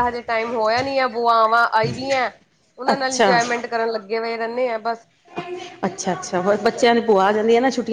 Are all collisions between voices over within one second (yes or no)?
yes